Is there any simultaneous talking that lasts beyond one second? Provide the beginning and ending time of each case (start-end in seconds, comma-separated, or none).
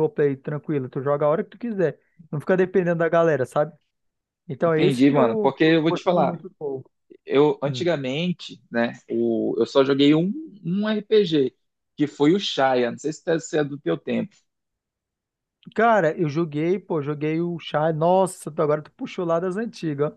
4.6-6.4